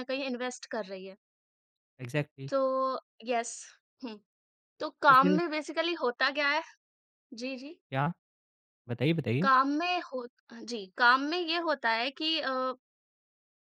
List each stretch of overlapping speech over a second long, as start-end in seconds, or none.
none